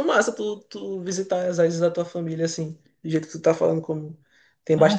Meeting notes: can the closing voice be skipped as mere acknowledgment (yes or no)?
yes